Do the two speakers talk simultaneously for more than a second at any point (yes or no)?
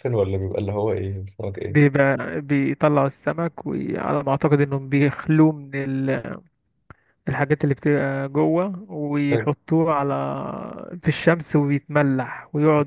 no